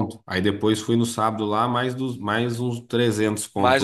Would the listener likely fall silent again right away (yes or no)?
no